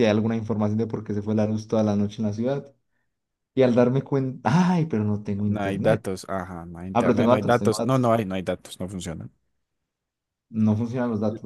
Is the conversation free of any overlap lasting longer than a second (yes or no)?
no